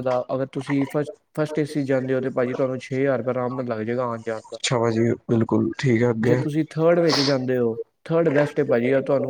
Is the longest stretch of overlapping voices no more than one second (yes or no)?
yes